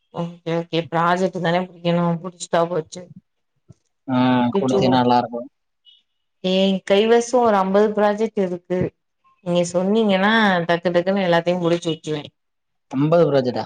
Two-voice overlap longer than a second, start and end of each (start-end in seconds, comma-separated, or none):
none